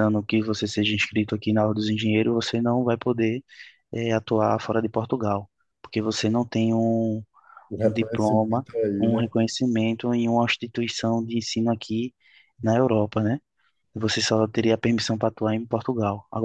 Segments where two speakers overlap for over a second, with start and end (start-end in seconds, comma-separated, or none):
7.8-9.2